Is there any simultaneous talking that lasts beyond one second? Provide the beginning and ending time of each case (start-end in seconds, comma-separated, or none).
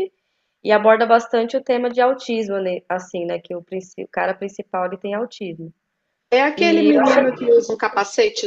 none